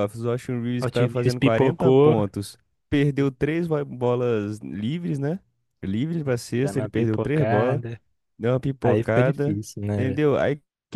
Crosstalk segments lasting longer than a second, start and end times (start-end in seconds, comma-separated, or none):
0.8-2.1, 6.6-7.8, 8.8-10.2